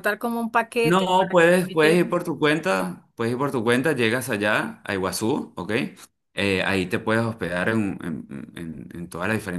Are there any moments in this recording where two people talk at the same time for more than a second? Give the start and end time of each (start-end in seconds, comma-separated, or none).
0.8-2.2